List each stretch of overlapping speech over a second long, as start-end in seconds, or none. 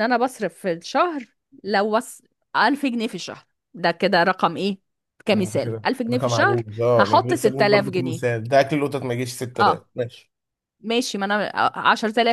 5.3-8.4